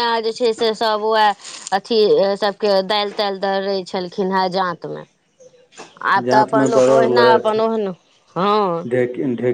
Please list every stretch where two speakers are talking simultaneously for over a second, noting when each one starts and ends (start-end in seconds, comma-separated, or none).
6.2-7.6